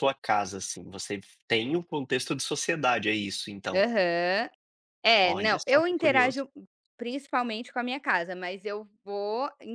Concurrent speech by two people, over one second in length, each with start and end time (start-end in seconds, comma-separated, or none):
5.2-6.4